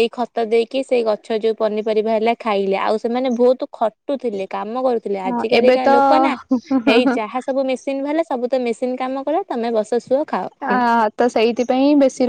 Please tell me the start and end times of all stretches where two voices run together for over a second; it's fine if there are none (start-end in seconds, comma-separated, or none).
none